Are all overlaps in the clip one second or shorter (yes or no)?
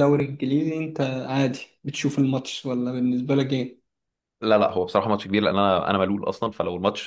yes